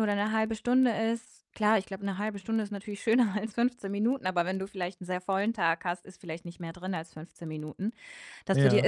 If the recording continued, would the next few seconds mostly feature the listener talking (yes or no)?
no